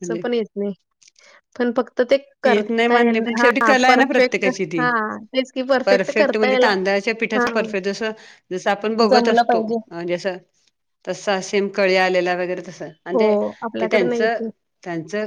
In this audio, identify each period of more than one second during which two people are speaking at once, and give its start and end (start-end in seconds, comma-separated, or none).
2.5-4.9